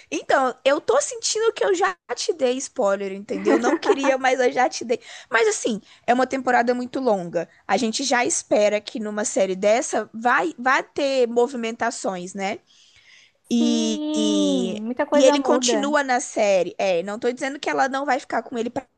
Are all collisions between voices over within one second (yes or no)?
no